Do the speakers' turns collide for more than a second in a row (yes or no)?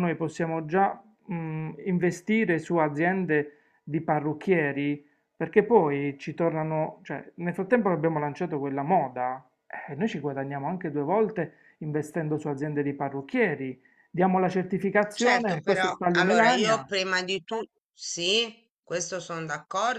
yes